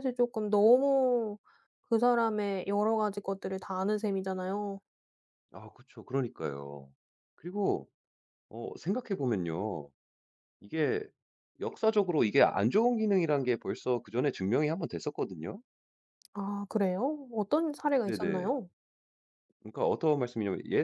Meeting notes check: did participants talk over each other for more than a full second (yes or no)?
no